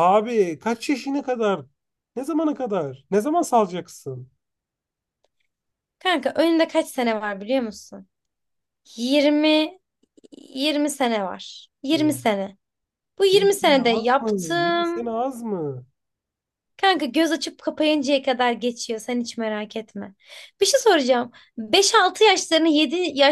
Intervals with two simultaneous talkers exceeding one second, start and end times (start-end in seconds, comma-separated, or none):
13.3-15.0